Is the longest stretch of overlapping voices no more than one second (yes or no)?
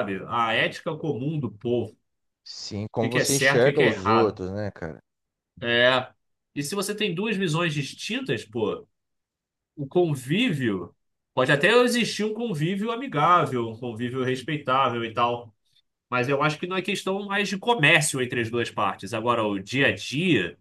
no